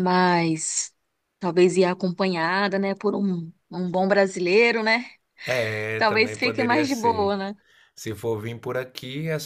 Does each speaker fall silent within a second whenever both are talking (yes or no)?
no